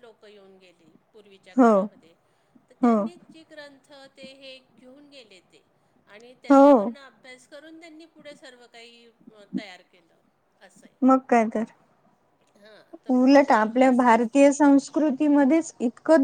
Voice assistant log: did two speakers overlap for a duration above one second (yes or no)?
yes